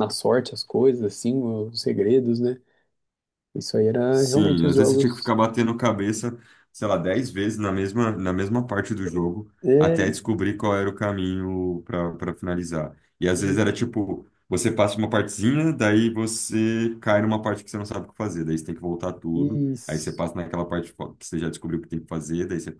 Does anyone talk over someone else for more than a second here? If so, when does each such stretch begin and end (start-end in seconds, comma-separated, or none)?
4.1-5.3